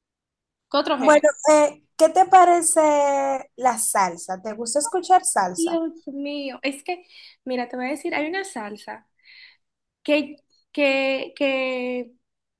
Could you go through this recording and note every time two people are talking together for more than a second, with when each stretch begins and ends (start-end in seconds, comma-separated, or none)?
none